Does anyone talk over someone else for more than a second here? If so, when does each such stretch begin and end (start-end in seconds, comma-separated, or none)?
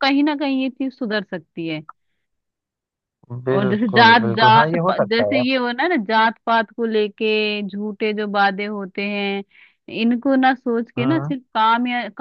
3.5-5.4